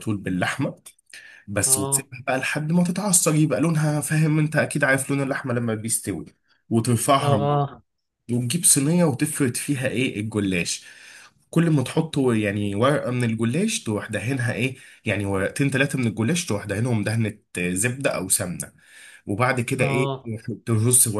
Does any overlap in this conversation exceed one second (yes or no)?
no